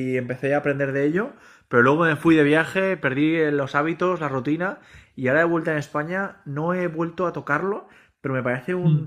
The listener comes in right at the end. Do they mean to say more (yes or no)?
no